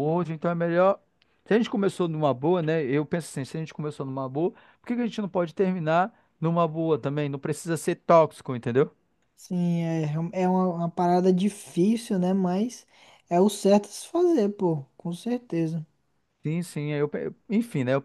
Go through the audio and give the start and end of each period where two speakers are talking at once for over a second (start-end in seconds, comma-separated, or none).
none